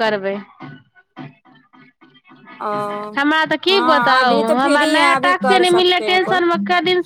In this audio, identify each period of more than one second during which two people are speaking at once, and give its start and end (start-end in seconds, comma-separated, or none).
3.7-6.4